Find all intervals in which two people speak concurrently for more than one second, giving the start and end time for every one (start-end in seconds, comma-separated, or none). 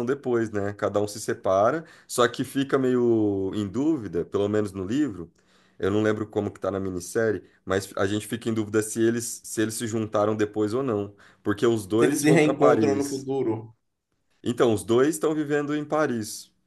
12.0-13.2